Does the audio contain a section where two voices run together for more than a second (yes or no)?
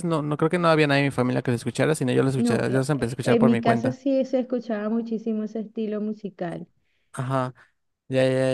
yes